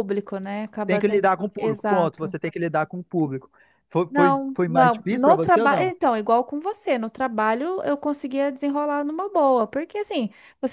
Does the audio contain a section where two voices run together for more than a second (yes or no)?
yes